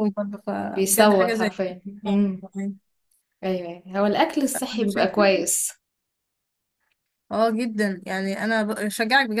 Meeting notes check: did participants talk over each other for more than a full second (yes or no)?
yes